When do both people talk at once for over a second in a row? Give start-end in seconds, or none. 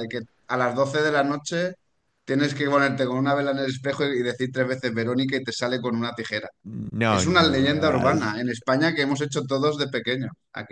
7.1-8.3